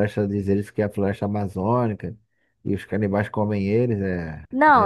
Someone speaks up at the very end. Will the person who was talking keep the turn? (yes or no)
no